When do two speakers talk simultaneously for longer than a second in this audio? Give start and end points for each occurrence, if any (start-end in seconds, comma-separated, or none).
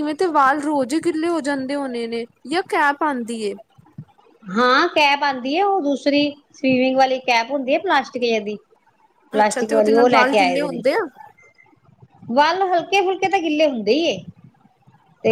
9.4-10.8